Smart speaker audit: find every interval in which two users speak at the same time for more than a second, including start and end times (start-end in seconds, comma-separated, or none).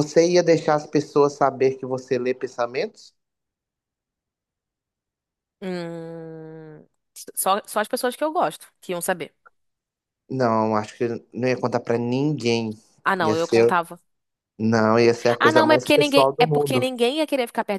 15.4-16.8